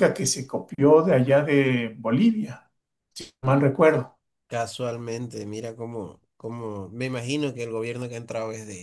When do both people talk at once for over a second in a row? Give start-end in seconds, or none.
none